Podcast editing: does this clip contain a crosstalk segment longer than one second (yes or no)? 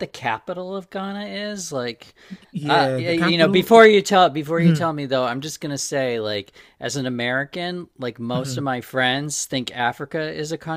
yes